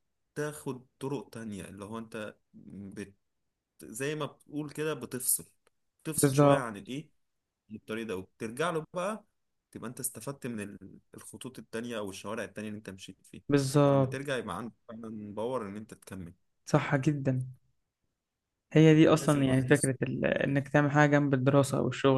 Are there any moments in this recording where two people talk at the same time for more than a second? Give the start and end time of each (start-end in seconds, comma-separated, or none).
19.2-20.7